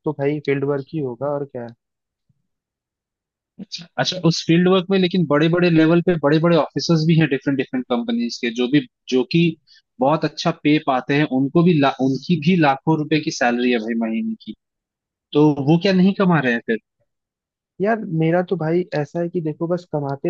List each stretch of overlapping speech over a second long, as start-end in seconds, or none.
none